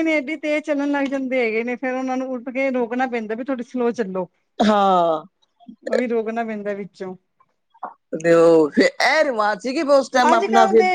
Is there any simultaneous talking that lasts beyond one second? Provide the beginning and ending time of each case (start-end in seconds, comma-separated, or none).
none